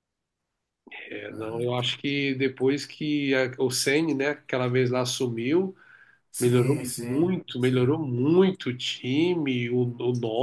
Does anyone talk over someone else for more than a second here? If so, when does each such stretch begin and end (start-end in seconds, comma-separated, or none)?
6.4-8.0